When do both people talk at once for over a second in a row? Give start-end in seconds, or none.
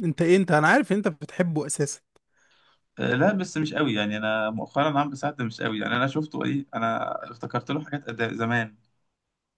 none